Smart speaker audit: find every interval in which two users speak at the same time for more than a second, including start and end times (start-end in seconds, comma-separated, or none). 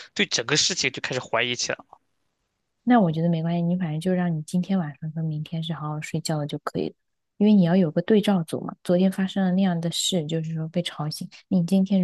none